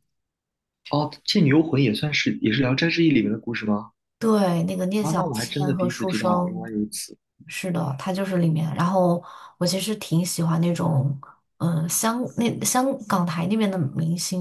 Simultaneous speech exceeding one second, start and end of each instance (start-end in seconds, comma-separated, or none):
5.0-6.7